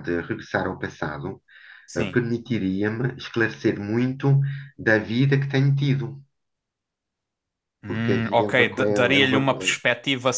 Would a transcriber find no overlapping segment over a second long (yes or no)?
no